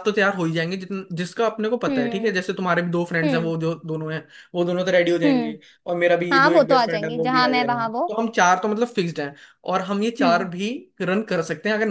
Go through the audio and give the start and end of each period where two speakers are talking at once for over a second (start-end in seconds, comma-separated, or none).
6.3-8.0